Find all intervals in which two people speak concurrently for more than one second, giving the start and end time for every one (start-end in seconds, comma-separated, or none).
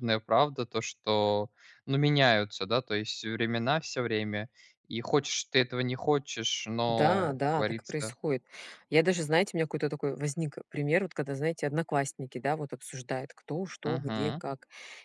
6.9-8.2